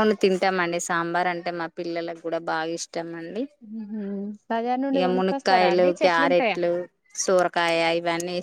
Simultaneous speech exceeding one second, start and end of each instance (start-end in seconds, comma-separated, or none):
5.0-6.6